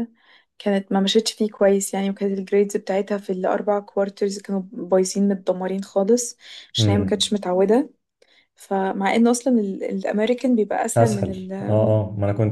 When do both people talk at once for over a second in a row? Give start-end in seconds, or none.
none